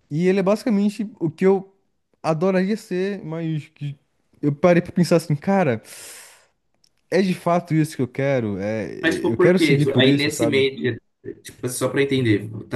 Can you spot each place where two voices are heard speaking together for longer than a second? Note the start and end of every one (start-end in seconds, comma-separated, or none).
9.3-10.6